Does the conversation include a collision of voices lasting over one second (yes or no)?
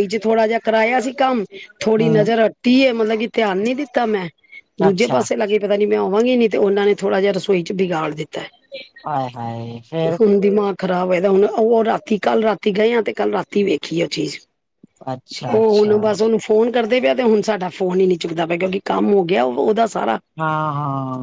no